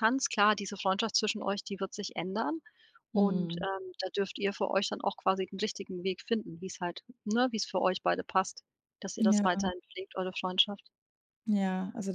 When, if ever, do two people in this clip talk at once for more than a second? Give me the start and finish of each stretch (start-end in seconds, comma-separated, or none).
none